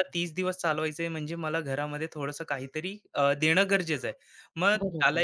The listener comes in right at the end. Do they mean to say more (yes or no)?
no